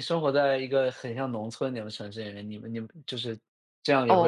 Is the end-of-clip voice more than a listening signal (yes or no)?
yes